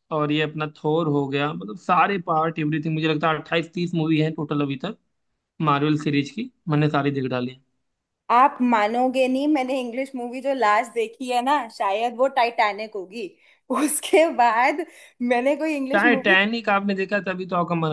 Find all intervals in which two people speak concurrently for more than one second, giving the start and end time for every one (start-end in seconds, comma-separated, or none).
none